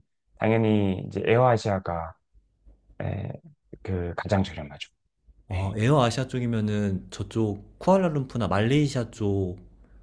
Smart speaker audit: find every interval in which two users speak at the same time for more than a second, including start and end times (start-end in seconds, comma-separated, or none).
none